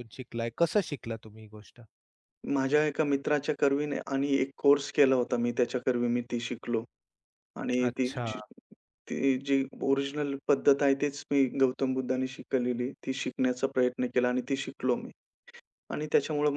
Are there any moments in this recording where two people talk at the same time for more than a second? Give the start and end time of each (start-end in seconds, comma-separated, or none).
none